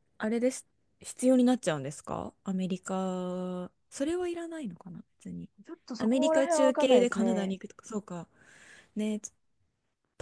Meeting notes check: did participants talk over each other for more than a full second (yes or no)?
yes